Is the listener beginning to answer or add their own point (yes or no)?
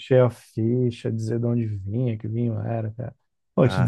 no